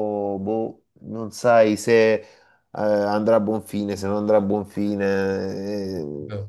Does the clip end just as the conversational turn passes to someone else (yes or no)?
no